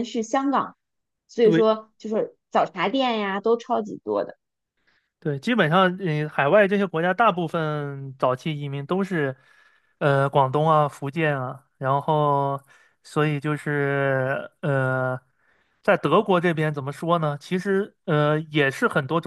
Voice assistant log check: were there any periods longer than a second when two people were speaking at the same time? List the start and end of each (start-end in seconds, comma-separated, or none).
none